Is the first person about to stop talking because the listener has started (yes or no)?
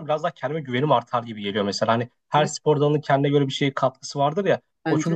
no